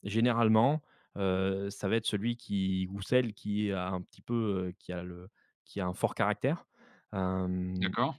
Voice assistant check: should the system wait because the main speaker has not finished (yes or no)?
yes